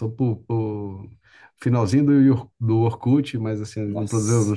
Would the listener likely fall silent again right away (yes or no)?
yes